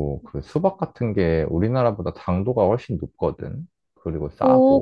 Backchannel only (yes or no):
no